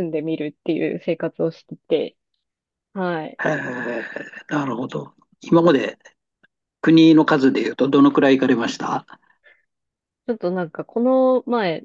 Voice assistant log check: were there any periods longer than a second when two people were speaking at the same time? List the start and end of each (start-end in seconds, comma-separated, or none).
none